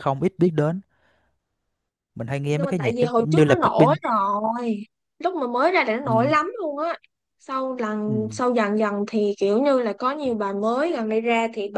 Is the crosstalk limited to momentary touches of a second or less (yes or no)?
no